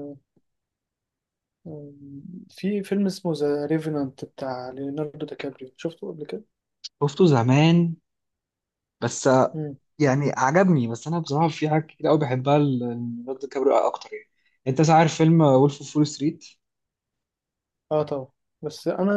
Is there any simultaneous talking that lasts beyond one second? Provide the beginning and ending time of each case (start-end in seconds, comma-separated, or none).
none